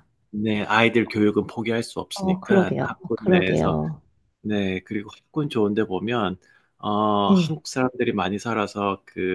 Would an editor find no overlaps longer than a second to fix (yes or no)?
no